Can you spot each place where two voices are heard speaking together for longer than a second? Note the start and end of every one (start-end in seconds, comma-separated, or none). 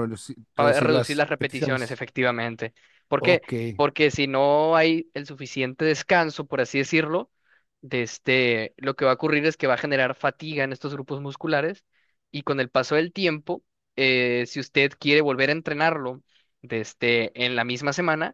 0.5-2.0